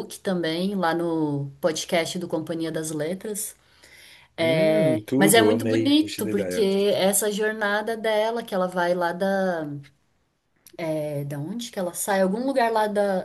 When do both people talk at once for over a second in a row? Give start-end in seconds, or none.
5.2-6.7